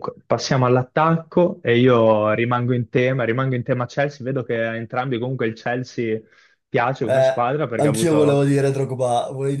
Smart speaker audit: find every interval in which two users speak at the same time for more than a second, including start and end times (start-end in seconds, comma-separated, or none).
7.0-8.4